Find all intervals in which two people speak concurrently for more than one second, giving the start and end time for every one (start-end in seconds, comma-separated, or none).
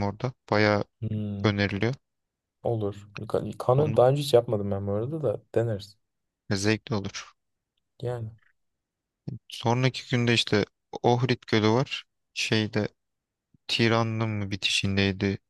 none